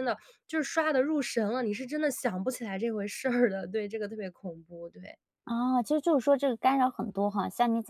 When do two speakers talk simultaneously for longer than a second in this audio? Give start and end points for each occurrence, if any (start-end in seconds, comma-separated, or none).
none